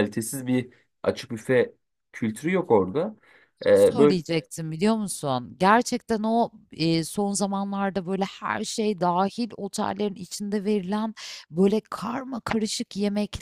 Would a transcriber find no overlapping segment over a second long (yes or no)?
yes